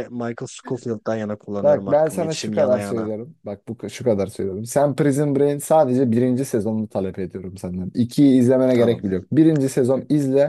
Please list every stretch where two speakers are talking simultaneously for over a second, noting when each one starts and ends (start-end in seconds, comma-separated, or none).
1.6-3.1